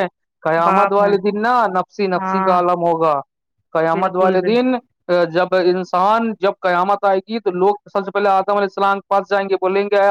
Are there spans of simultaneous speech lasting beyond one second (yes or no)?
no